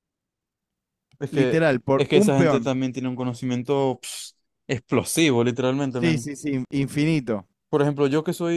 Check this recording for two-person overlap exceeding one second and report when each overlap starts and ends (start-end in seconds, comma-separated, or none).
1.3-2.7